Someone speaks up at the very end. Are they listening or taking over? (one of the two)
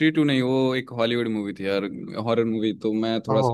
listening